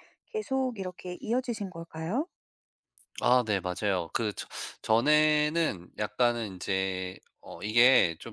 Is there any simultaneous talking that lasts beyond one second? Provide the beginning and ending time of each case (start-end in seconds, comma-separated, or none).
none